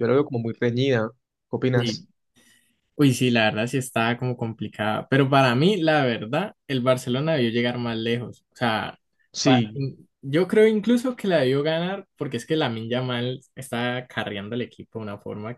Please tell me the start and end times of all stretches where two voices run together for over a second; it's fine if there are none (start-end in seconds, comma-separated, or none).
none